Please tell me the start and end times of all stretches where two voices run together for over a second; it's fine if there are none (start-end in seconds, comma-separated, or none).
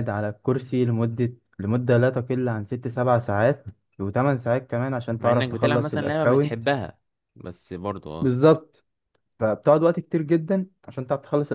5.2-6.6